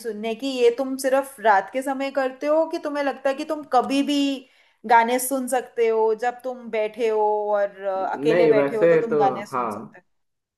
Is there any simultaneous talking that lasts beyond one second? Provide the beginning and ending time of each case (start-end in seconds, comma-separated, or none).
8.3-10.0